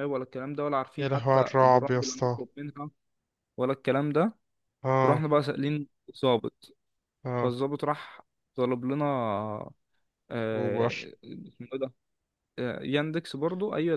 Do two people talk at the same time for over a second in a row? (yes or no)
yes